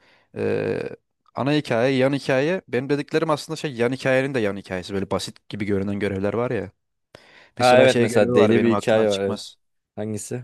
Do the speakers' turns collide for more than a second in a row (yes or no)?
yes